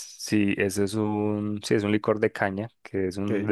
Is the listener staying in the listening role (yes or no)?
yes